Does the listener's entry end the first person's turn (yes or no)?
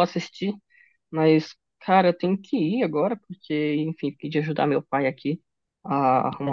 no